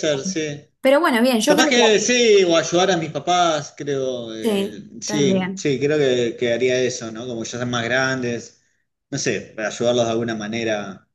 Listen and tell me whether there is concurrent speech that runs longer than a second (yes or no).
yes